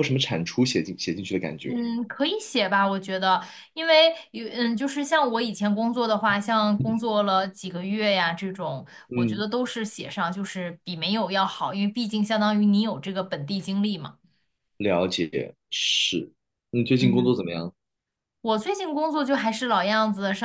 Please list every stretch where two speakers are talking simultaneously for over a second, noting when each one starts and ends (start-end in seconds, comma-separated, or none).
none